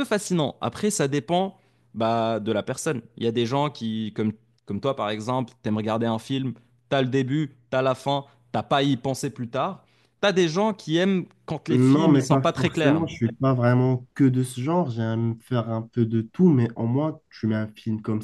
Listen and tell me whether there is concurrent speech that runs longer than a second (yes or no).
yes